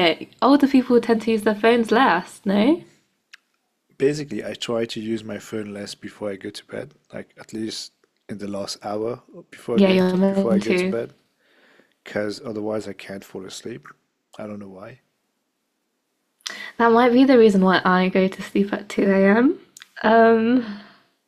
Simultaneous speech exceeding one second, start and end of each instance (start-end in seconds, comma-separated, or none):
9.7-10.9